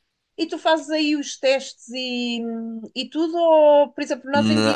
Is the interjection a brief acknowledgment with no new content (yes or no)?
yes